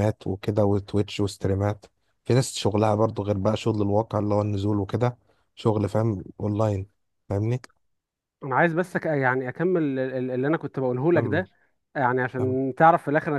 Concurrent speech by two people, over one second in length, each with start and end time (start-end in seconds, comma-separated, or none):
none